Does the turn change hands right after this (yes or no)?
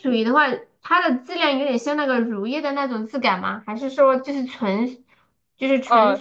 yes